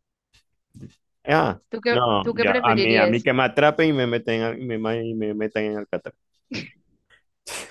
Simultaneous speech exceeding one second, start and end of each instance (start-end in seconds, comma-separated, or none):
1.7-3.3